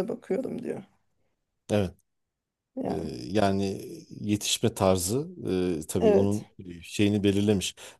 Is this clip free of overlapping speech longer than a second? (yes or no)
yes